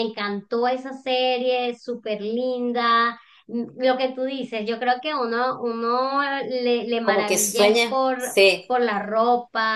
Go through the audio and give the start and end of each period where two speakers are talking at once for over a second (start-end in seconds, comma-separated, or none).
7.0-8.7